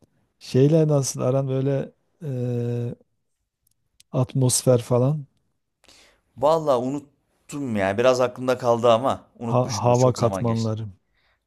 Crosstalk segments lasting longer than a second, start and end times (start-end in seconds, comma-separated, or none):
9.4-10.7